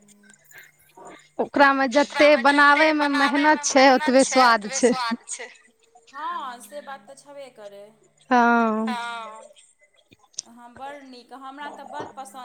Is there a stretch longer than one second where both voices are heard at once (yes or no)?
yes